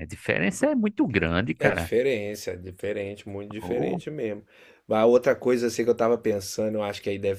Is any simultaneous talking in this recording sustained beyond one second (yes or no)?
no